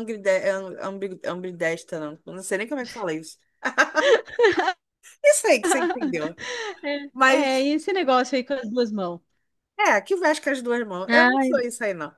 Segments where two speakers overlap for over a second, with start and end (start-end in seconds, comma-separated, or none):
none